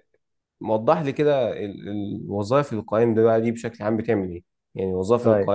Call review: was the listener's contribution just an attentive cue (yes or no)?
yes